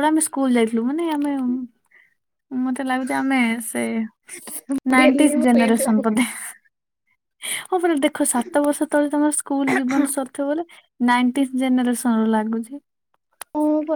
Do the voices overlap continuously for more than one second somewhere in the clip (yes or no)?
yes